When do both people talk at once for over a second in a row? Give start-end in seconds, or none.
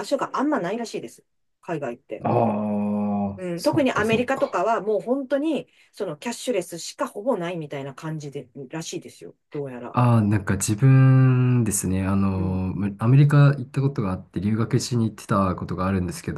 3.4-4.6